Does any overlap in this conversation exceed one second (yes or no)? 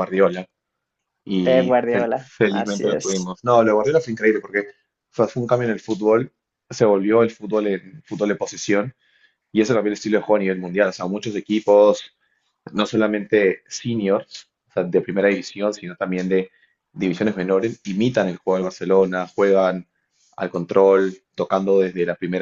yes